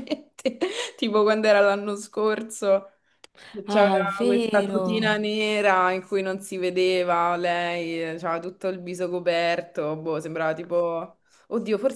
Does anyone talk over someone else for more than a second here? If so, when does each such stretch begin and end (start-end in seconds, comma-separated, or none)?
3.6-5.2